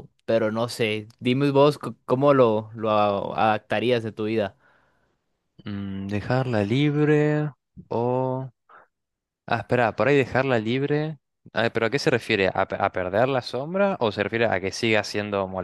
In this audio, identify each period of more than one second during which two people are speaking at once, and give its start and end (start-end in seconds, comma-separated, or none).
none